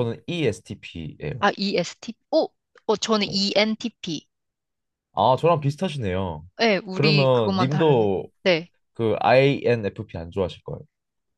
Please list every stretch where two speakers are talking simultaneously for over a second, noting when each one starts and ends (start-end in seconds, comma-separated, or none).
6.9-8.3